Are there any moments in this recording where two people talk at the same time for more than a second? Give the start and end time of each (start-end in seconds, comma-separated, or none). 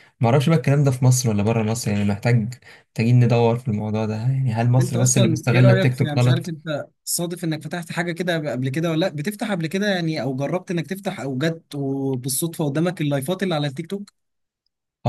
4.8-6.5